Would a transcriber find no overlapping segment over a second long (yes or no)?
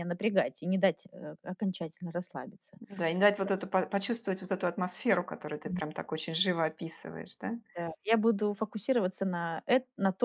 yes